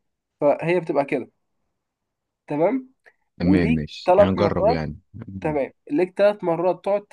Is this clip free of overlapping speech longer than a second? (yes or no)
no